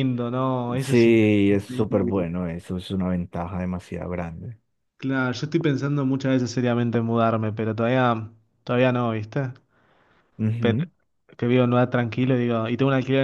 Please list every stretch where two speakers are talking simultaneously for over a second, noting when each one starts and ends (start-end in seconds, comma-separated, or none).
0.8-2.2